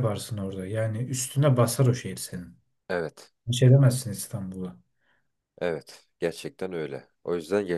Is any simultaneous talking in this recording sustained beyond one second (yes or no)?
no